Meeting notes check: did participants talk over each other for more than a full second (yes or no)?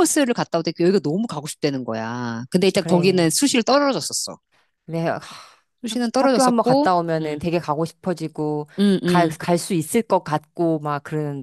yes